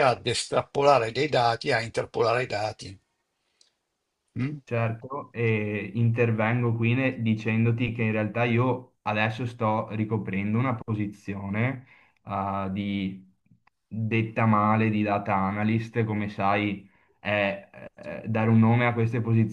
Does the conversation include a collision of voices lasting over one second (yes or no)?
no